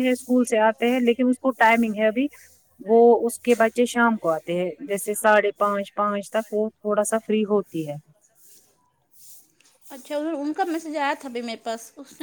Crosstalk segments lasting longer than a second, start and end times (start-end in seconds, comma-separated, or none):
none